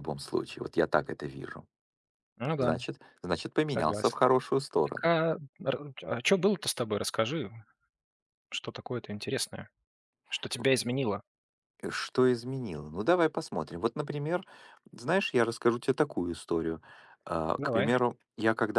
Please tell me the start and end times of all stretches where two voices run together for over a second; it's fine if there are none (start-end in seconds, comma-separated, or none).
none